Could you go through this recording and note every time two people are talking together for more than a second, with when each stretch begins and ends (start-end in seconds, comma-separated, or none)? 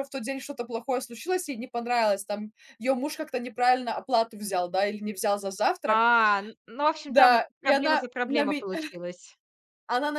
7.1-8.7